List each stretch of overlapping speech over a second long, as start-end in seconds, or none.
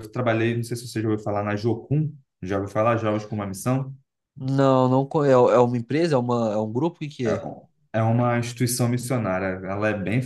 none